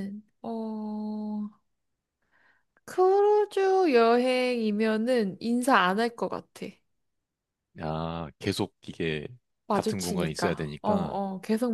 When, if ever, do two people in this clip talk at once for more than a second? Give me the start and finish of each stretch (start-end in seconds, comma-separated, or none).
9.7-11.2